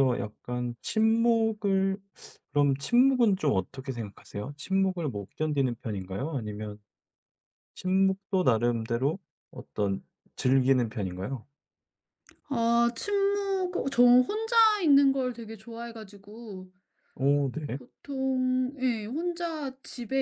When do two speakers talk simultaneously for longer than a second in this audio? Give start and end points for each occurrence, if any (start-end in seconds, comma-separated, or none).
none